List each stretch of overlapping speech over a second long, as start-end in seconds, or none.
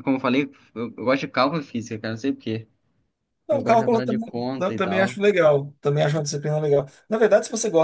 3.5-5.2